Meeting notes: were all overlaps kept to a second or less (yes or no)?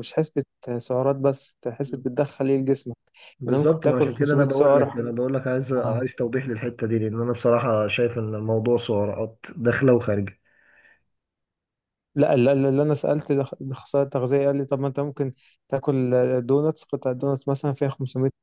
no